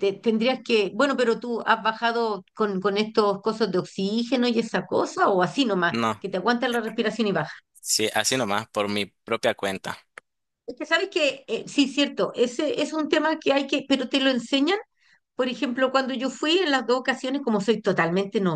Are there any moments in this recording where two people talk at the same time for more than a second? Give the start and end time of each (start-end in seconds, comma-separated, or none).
none